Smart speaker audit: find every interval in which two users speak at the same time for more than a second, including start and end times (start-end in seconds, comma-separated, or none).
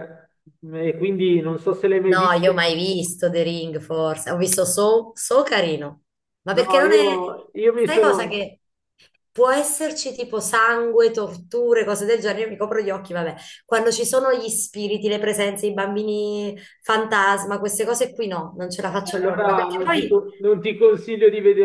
18.9-20.2